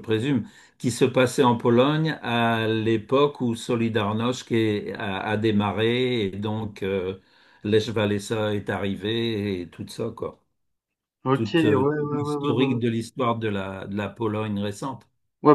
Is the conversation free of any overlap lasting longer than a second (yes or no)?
no